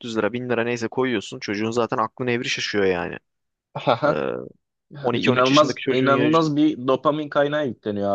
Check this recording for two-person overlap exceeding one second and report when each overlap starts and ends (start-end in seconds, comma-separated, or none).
5.0-6.3